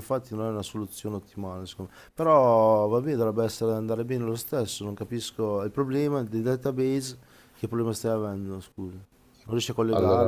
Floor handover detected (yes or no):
yes